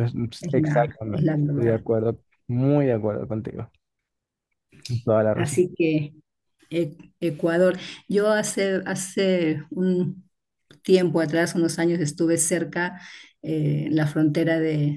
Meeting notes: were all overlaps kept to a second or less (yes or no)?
no